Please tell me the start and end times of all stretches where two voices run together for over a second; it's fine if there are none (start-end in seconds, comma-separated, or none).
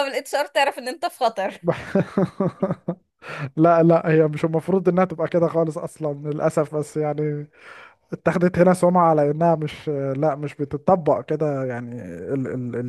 none